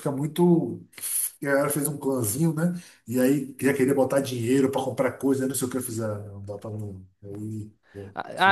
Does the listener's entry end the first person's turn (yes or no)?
yes